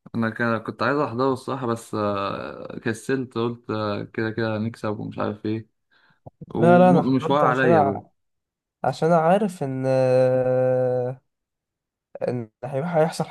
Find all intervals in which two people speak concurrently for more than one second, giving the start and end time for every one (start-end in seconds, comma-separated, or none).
6.5-8.0